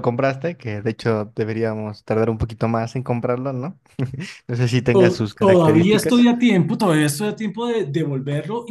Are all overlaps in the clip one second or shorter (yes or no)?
no